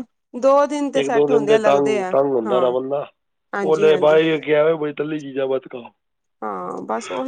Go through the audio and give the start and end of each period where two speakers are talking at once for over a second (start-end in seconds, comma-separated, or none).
1.0-2.6